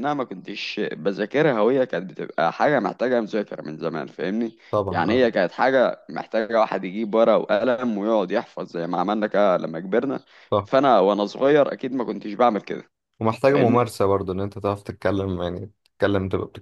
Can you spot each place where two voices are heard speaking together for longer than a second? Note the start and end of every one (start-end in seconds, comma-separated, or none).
none